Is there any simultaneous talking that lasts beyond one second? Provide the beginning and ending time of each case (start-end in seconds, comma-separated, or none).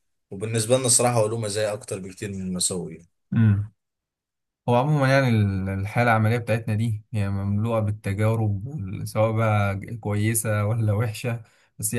none